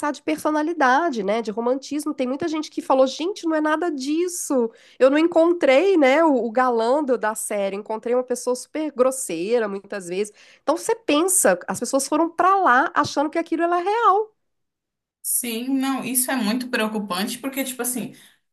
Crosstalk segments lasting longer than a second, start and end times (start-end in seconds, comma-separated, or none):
none